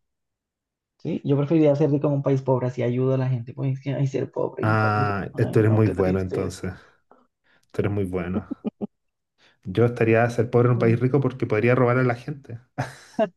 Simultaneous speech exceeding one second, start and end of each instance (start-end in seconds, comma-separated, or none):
4.6-6.7